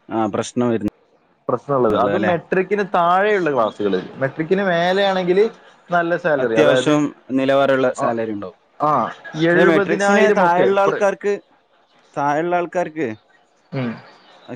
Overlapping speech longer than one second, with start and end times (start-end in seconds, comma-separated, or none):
9.5-10.9